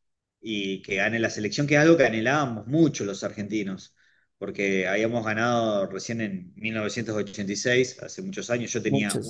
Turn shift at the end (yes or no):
no